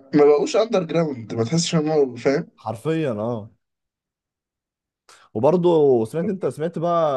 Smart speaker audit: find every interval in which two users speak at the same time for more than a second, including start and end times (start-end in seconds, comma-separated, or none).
none